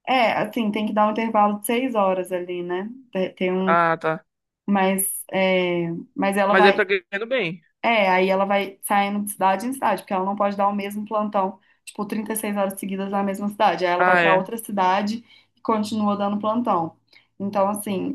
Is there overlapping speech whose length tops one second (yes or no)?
no